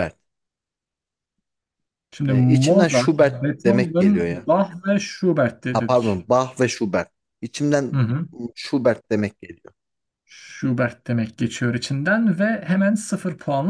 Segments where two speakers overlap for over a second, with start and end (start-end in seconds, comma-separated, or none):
2.3-4.5